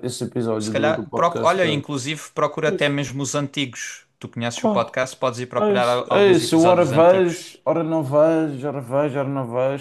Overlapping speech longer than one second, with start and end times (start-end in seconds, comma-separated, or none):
0.6-1.8, 5.6-7.4